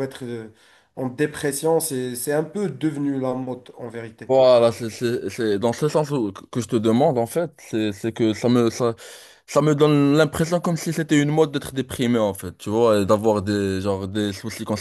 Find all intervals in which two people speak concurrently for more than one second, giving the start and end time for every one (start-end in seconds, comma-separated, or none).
none